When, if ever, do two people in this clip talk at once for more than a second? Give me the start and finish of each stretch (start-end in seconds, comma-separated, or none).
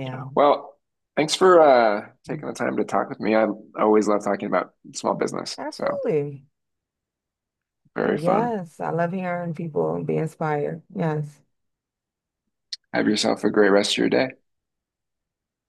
none